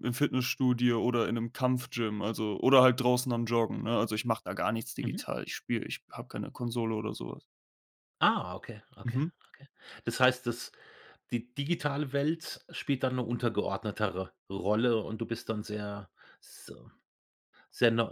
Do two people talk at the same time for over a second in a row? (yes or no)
no